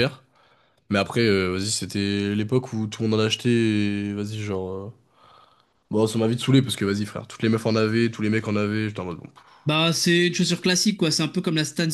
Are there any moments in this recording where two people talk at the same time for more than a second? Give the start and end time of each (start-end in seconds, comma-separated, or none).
none